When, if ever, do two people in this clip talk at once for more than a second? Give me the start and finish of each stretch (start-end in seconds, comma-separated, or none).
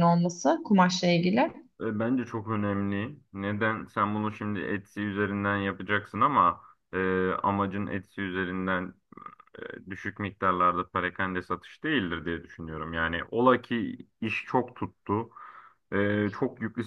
none